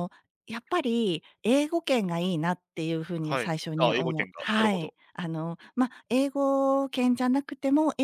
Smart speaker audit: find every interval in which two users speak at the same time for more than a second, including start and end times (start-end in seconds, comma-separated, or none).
3.2-4.9